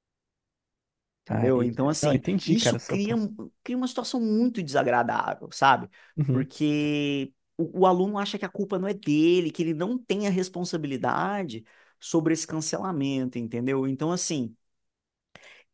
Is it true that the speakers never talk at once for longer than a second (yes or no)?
no